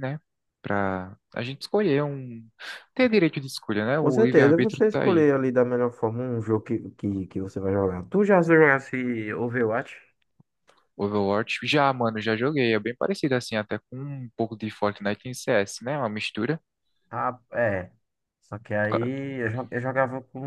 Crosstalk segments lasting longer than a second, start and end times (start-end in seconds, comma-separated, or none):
4.0-5.2